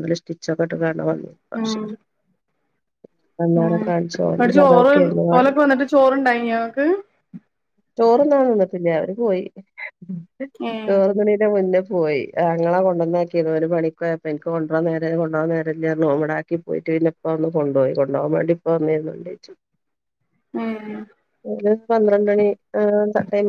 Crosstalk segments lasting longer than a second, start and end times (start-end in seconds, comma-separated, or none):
3.6-4.9